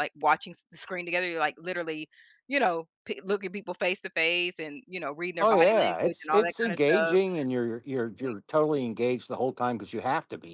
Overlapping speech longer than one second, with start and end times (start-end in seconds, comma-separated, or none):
5.4-7.2